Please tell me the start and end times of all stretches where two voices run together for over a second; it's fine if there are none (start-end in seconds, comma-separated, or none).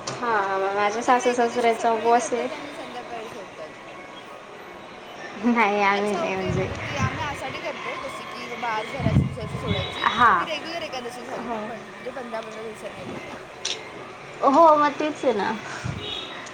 0.9-2.5